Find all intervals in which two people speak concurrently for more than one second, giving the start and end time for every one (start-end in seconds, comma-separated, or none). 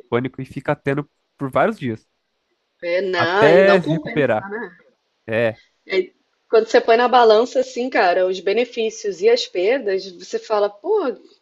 3.2-4.5